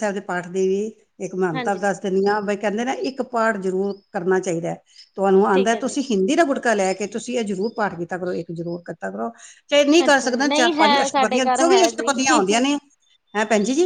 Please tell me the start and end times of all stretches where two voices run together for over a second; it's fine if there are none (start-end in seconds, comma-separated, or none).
10.1-12.1